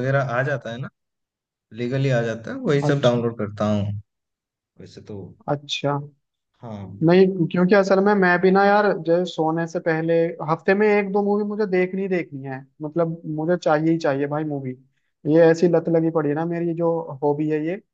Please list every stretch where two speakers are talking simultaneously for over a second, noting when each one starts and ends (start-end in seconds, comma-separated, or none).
none